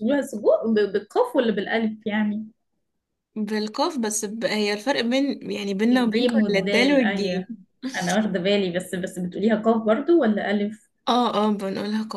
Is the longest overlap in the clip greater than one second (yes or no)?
yes